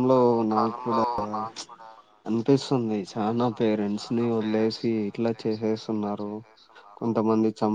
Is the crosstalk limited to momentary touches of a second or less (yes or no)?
no